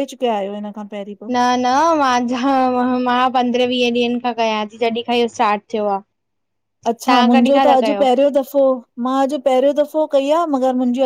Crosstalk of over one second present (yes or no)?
no